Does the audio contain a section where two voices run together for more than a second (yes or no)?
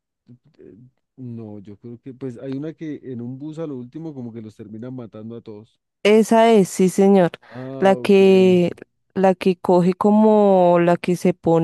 no